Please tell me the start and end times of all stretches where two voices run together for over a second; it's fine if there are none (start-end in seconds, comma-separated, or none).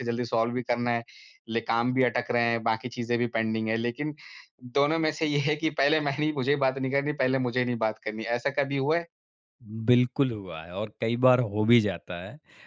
none